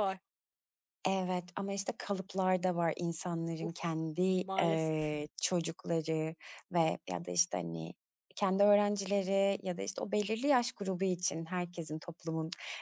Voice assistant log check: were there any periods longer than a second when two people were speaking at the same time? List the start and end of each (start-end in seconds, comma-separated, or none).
3.6-5.2